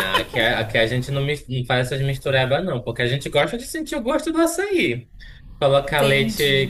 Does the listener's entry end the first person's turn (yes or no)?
no